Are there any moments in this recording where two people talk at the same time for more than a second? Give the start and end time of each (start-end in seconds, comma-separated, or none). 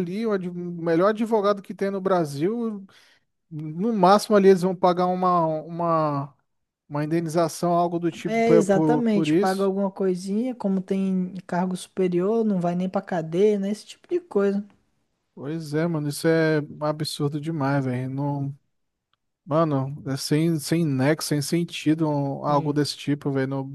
8.2-9.7